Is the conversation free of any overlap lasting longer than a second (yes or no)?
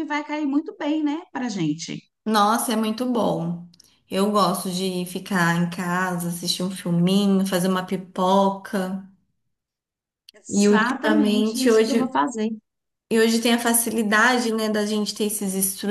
no